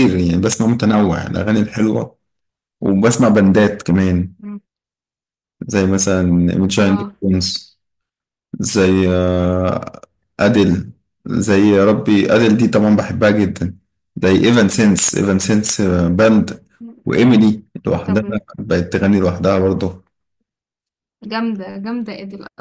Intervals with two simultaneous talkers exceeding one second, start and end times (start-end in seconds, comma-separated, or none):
none